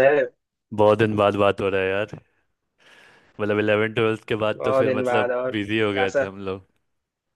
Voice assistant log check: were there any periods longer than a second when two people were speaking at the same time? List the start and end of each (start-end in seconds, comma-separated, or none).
4.5-6.3